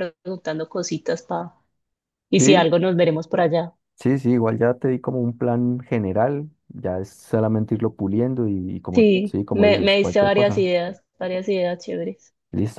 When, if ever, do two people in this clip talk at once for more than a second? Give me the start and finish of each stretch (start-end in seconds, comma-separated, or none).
8.9-10.7